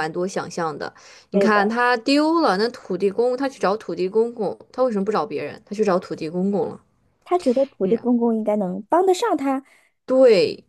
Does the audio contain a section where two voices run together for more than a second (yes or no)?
no